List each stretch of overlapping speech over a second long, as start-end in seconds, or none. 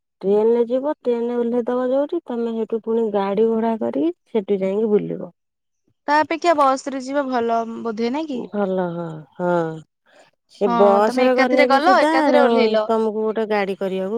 10.7-12.8